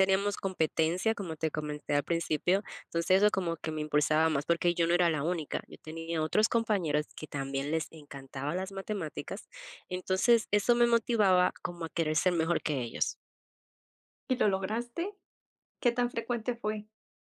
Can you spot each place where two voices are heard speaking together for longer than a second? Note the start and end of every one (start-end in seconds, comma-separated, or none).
none